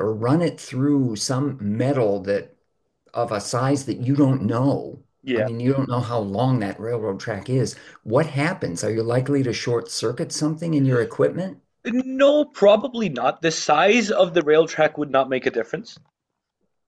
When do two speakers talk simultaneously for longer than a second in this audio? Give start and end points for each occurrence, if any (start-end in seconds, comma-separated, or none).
none